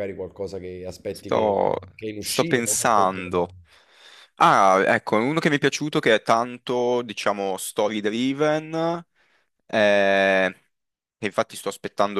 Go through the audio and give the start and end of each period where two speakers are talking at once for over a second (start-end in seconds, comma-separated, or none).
2.2-3.5